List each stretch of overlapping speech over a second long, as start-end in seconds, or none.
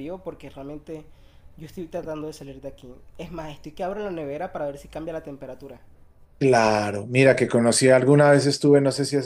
none